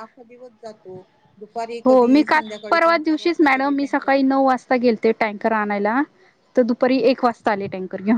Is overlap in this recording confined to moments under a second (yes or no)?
no